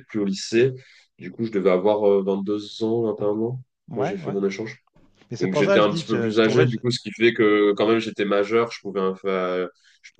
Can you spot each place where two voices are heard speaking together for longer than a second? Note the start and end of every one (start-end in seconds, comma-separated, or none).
5.4-6.8